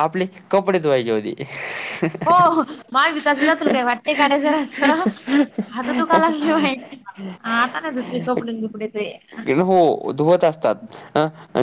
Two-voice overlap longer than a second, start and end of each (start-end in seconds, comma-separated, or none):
none